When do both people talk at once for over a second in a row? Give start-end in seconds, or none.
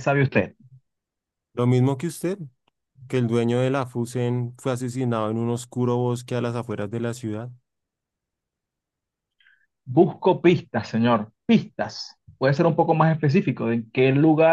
none